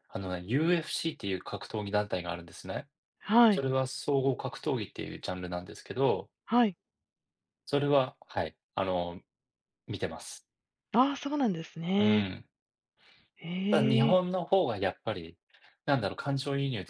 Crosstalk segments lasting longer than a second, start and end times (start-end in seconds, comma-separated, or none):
none